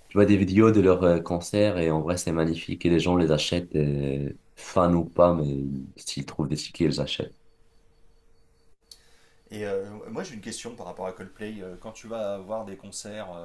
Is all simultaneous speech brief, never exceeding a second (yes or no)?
yes